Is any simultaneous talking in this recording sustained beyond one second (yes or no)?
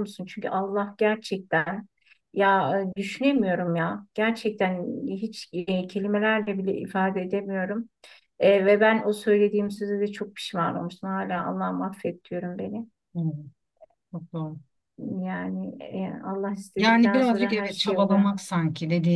yes